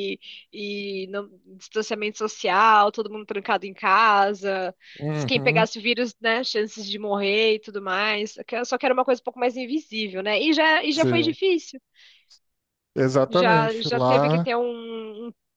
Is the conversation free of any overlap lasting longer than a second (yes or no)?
no